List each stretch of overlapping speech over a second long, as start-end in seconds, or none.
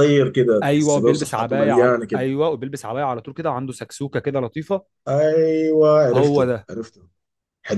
0.6-2.3